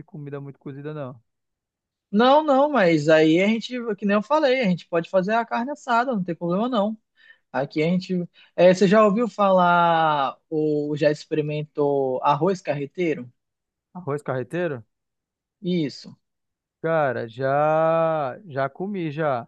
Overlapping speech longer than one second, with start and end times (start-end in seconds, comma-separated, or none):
none